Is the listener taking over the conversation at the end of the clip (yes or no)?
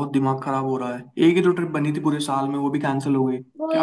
yes